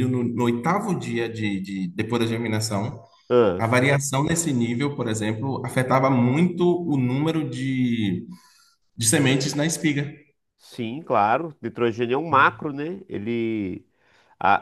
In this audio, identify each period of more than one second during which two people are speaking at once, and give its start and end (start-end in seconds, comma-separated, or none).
none